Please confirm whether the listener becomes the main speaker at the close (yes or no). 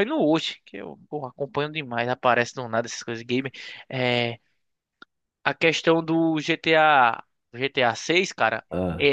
no